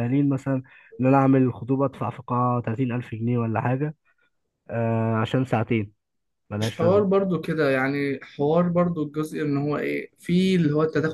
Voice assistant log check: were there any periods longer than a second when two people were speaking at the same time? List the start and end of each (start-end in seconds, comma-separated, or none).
none